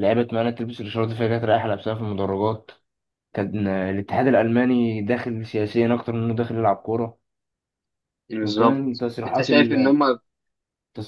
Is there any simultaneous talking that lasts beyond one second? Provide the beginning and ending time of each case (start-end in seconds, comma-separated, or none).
8.4-9.9